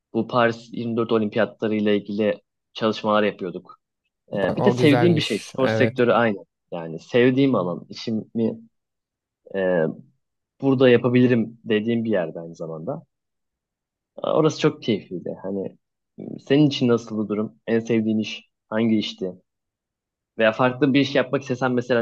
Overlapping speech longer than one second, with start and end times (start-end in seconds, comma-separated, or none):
4.3-6.0